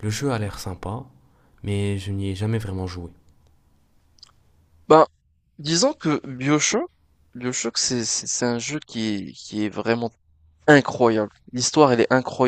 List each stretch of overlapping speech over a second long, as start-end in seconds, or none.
none